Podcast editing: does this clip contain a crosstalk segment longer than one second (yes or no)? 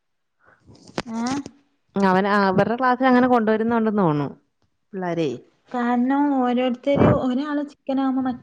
no